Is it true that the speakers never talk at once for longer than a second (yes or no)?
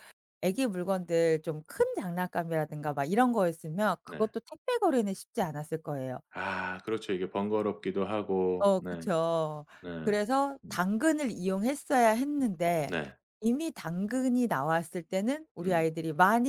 yes